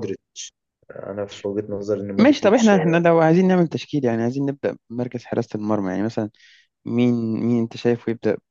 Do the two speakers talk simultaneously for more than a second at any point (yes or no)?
no